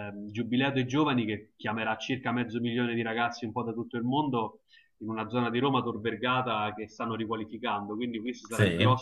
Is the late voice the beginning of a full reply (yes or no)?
no